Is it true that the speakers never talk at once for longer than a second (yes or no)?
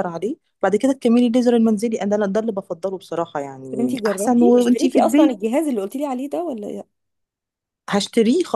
no